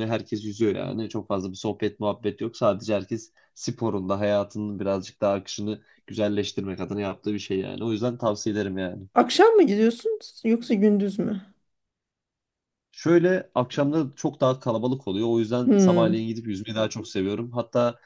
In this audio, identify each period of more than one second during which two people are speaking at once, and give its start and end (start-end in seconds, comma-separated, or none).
none